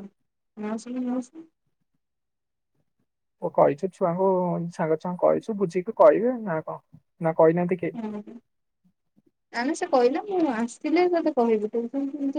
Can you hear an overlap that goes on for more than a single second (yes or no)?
no